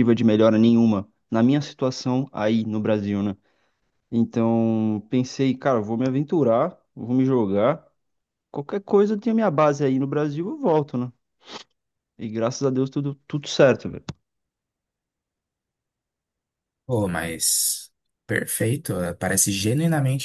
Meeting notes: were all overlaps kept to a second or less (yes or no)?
yes